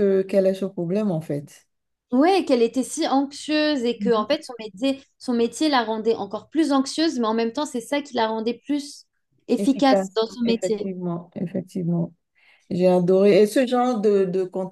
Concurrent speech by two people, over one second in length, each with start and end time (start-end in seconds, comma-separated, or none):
9.6-10.9